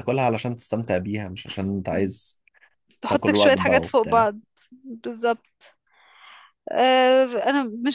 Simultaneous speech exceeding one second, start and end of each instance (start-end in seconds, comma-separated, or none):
3.1-4.3